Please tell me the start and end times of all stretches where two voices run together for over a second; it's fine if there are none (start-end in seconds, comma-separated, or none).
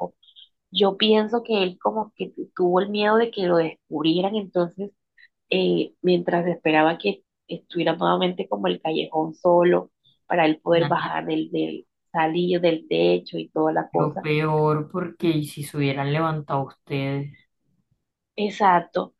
none